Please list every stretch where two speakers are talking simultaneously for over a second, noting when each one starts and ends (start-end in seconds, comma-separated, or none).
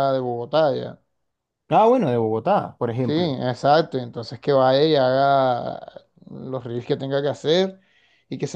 none